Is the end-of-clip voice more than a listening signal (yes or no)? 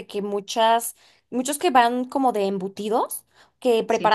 no